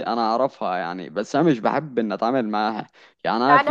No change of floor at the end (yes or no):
no